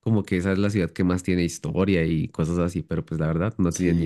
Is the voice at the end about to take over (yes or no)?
yes